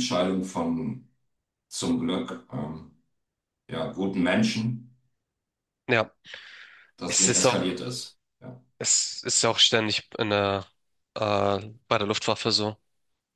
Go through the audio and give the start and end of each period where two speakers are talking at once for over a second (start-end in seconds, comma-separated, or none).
none